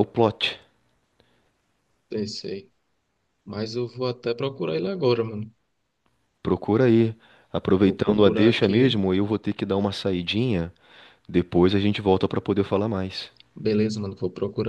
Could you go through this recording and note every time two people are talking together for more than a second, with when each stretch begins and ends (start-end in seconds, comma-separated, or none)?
7.8-9.0